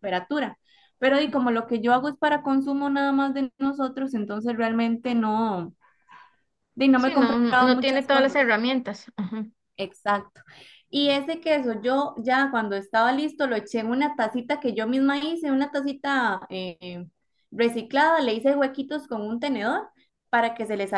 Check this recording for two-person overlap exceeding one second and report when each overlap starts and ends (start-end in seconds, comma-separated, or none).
7.0-8.5